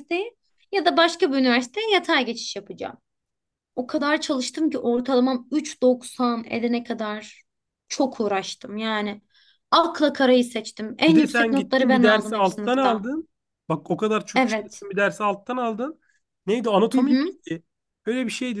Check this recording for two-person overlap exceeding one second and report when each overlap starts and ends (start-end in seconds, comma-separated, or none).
11.1-13.1